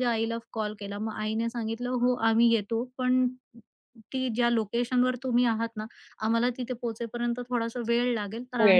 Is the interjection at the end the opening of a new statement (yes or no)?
no